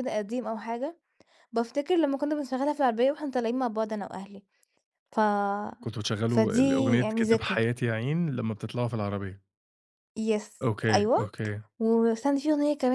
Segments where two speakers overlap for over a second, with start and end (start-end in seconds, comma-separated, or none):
6.3-7.6